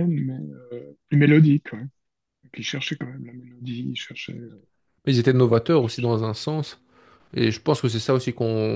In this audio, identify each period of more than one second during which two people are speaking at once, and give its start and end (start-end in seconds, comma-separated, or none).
none